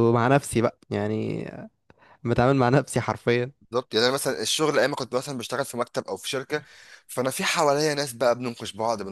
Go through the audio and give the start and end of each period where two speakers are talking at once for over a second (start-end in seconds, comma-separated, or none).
none